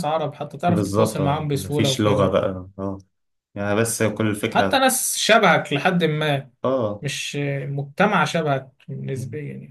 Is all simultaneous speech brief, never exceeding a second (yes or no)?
no